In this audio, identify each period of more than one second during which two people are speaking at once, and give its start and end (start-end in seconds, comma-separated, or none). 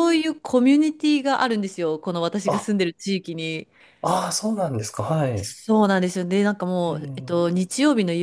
none